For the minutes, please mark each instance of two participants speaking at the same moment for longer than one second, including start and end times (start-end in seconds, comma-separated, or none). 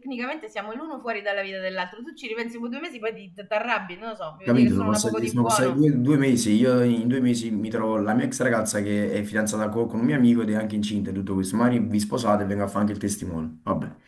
4.4-5.9